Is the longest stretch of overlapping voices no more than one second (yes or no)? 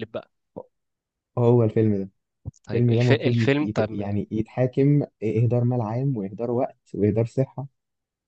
no